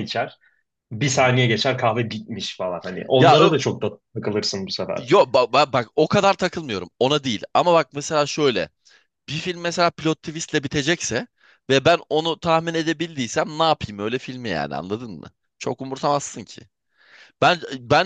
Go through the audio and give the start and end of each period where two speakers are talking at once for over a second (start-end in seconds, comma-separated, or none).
none